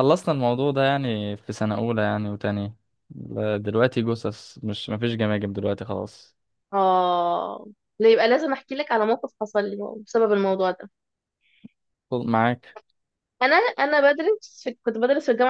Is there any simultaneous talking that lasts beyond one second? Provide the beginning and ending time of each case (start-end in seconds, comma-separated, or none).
none